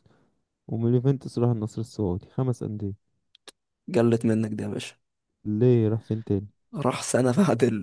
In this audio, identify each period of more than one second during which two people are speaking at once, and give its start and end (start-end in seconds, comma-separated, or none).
none